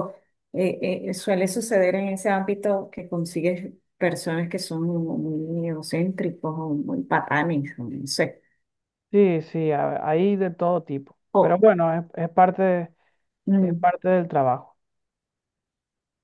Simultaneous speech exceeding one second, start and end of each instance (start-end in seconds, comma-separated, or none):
none